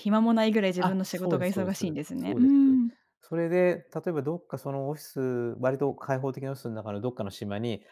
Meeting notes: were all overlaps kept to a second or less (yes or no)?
no